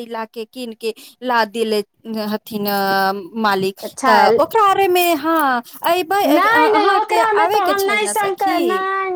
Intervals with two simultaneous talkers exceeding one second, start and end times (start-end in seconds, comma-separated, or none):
6.3-8.6